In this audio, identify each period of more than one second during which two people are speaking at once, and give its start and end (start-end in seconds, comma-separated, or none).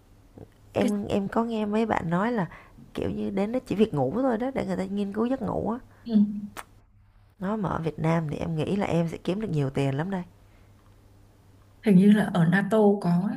none